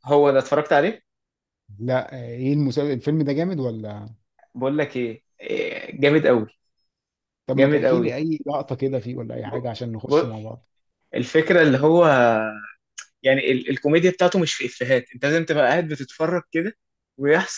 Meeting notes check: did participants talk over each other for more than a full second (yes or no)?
no